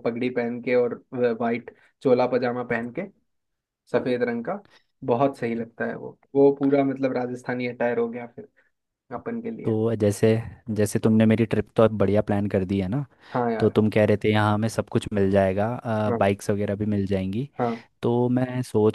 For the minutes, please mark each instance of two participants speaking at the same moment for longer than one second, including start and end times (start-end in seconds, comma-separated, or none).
none